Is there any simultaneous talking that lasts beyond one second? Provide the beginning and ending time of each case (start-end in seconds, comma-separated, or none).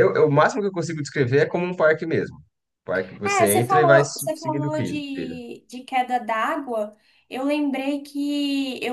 3.2-5.4